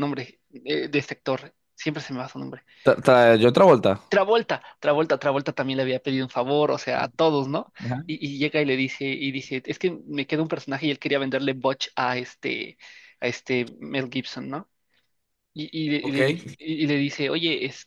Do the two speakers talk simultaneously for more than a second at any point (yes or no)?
no